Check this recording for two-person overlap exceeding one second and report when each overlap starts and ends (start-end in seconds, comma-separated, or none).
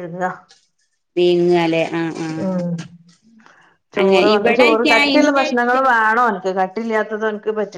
4.0-5.9